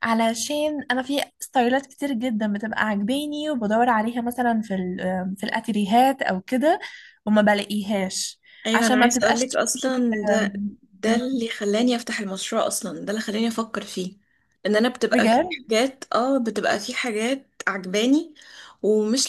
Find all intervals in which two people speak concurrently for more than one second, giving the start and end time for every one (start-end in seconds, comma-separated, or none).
8.7-9.9